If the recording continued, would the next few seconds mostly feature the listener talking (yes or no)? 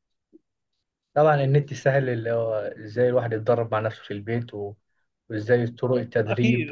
yes